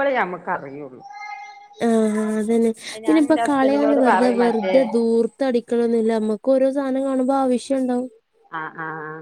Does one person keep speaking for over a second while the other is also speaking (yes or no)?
yes